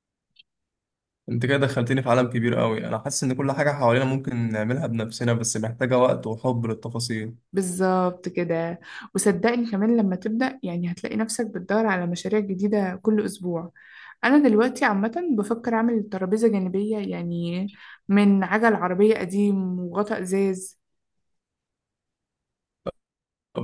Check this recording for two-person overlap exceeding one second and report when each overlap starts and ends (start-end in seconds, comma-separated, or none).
none